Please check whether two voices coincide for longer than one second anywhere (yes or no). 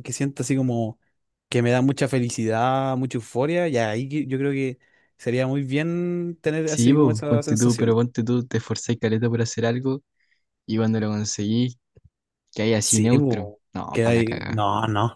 yes